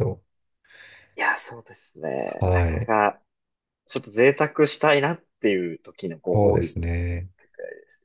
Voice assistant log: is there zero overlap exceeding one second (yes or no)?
yes